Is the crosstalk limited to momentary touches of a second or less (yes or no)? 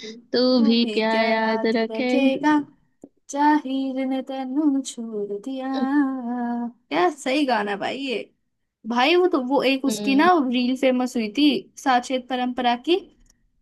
no